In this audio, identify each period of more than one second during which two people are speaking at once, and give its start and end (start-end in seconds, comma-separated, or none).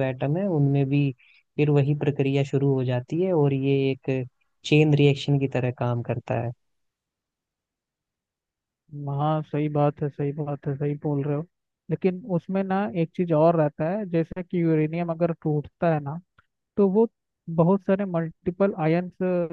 none